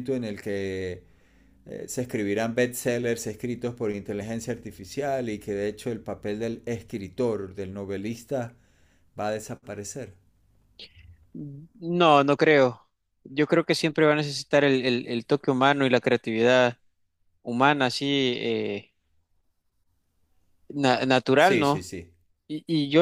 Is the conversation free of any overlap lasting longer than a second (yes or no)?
yes